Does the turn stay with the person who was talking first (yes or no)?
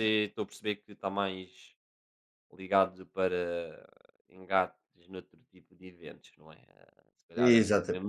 yes